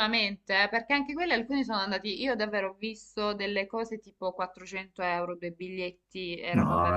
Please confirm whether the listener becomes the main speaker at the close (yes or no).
yes